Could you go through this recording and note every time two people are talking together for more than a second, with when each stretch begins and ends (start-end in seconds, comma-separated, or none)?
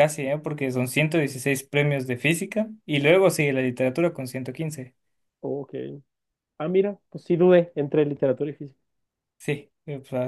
none